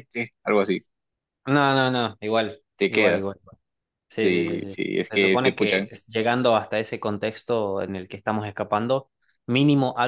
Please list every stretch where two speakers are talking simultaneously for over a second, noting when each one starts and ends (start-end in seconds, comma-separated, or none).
4.2-5.9